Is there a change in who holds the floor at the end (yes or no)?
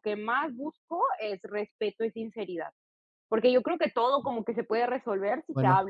no